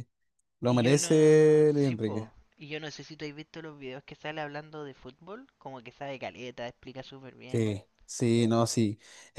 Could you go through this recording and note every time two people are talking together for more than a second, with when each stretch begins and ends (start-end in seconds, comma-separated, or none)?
0.7-2.3